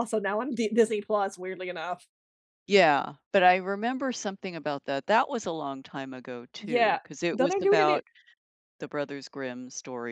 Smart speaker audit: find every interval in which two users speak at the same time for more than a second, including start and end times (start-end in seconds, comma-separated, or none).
6.6-8.0